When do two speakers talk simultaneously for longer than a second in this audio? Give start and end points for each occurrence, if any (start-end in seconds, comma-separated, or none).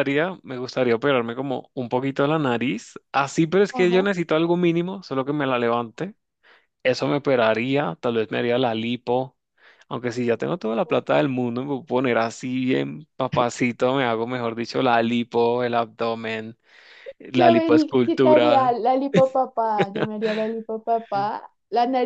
17.4-18.8